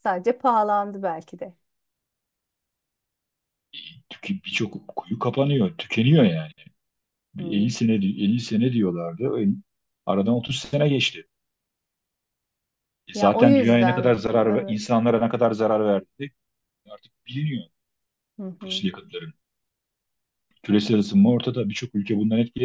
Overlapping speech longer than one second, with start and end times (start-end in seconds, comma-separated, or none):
13.1-14.8